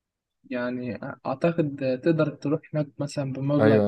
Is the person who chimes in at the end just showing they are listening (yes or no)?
no